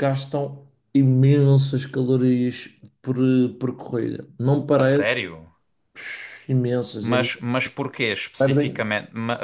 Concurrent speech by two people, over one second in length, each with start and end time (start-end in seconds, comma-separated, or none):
none